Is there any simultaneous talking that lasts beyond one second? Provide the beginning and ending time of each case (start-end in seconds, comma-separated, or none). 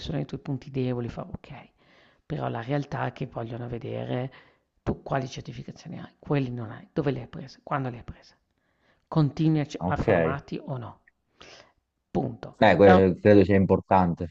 none